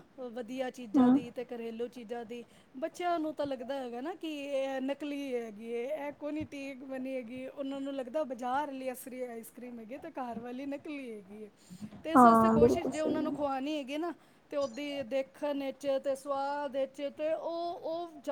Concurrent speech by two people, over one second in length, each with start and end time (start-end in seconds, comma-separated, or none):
12.2-13.4